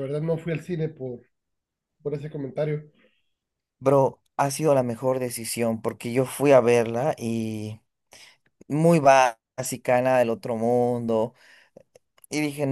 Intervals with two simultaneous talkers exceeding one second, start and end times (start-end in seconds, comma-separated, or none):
none